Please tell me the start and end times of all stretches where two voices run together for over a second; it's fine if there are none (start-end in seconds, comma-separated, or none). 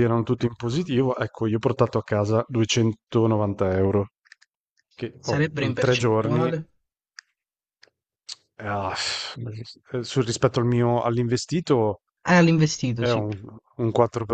5.2-6.5